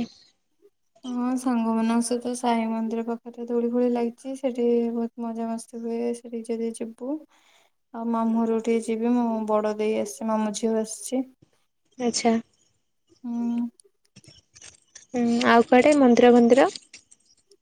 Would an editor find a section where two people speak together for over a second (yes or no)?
no